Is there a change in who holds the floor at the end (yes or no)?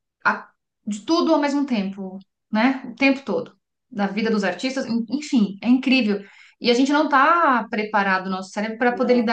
no